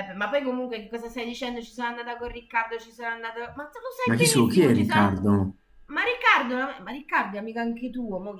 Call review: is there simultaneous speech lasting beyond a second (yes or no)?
yes